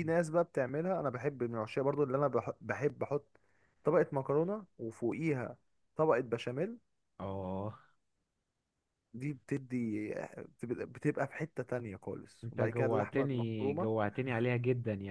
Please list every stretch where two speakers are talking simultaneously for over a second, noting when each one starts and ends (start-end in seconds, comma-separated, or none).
12.4-13.9